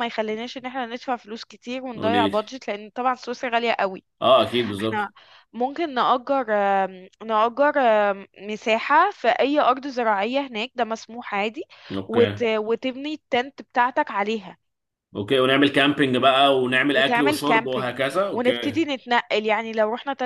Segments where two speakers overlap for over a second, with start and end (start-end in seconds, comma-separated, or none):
16.9-18.8